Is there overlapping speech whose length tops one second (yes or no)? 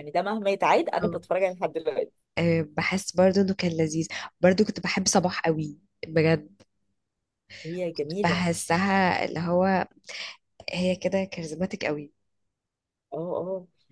no